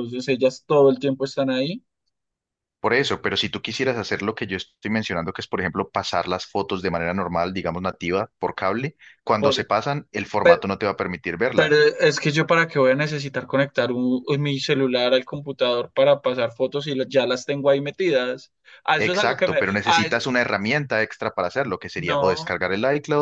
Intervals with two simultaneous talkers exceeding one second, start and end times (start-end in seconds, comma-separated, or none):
19.0-20.3